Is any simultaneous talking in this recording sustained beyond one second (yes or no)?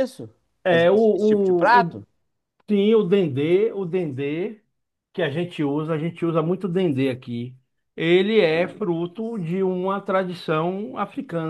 yes